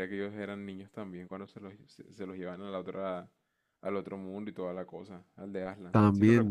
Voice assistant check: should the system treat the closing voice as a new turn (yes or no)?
yes